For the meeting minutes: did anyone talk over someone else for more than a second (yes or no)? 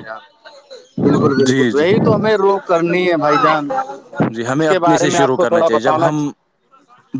yes